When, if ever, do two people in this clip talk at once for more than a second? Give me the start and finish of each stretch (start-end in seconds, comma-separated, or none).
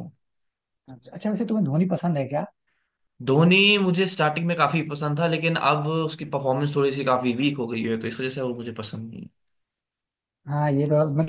none